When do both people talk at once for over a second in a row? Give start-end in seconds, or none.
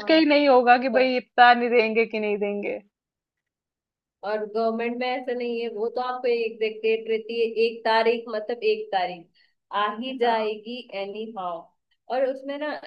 none